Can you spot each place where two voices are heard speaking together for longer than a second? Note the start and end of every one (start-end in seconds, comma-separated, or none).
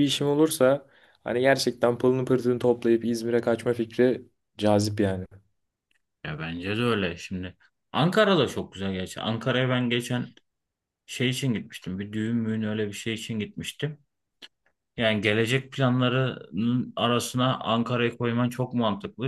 none